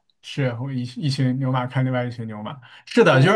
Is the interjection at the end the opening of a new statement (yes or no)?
no